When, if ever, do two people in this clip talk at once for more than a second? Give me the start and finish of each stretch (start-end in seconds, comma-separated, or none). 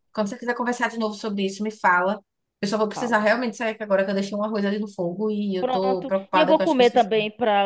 5.6-7.1